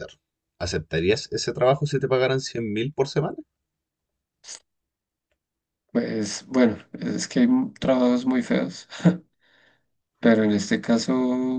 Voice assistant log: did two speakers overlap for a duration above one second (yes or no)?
no